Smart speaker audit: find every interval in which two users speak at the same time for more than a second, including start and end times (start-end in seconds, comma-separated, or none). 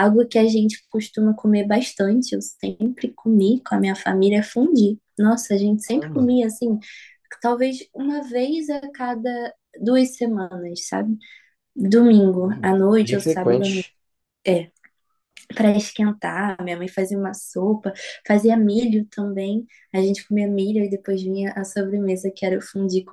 12.4-13.9